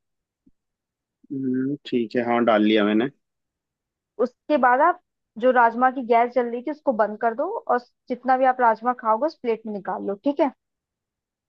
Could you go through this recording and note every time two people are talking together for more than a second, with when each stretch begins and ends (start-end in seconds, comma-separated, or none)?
none